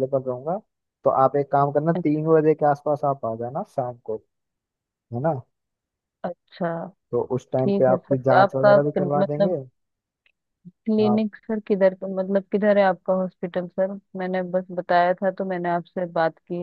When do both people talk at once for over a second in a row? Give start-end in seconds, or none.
7.6-9.5